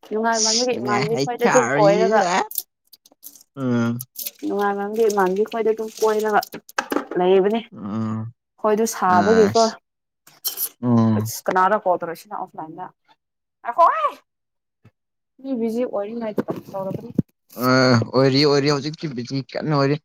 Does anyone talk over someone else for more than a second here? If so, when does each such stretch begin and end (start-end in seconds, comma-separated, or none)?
0.7-2.2